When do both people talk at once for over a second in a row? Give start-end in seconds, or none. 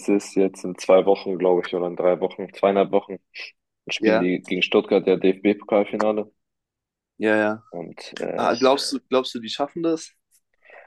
none